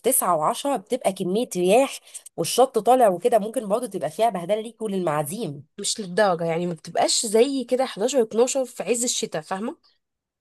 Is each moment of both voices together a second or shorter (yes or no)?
yes